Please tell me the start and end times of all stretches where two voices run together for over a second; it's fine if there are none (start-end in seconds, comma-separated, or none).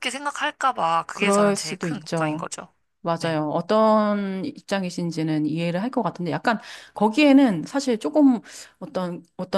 1.1-2.5